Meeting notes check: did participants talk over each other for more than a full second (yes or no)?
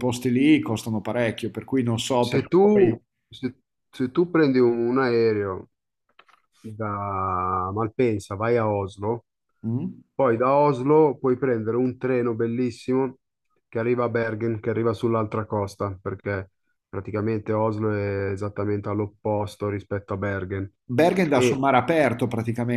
no